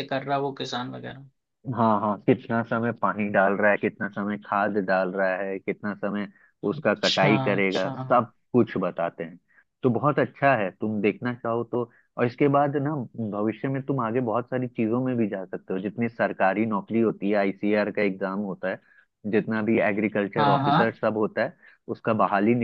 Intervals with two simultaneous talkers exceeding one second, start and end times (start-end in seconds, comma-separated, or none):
6.7-8.2